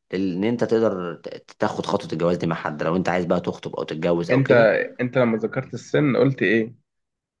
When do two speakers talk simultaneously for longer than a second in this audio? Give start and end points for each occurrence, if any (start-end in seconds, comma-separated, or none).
none